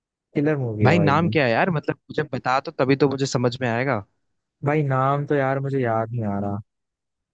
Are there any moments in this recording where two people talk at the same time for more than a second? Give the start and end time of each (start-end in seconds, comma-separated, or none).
none